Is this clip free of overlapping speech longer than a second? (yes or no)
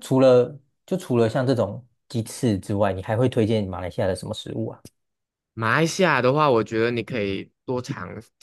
yes